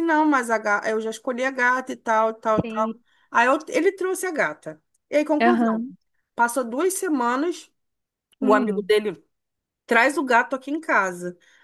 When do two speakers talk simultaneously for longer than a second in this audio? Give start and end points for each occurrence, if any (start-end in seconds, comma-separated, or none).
none